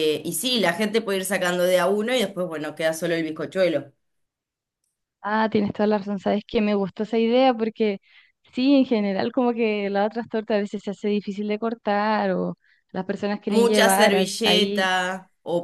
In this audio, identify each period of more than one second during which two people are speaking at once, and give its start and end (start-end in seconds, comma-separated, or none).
13.5-14.9